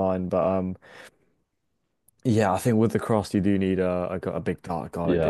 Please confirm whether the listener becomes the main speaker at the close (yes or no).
yes